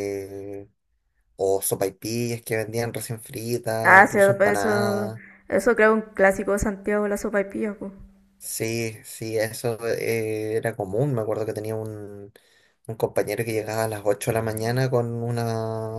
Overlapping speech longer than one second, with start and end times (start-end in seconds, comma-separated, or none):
3.8-5.1